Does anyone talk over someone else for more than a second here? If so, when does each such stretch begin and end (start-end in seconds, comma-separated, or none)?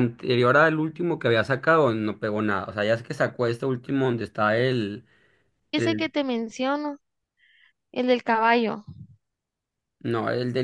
none